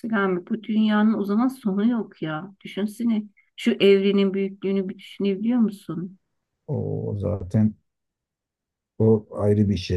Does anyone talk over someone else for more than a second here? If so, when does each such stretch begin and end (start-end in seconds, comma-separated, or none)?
none